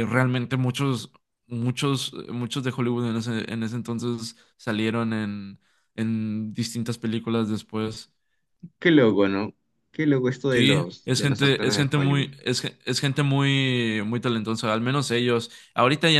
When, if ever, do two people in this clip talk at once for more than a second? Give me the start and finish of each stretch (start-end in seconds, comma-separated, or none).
10.5-12.3